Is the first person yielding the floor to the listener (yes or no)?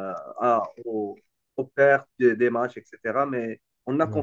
no